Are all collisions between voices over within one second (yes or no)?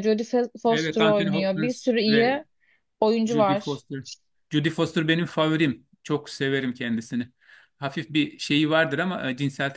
no